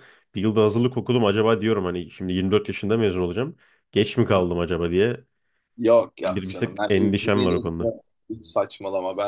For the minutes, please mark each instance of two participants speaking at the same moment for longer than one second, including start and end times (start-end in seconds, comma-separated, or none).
6.2-7.9